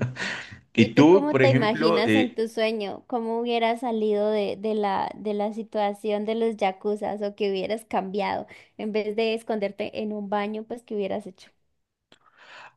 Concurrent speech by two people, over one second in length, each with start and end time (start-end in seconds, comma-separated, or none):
0.8-2.4